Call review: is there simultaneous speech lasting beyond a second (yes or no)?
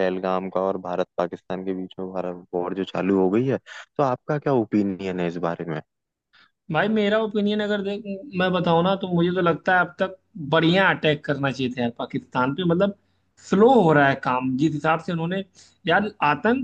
no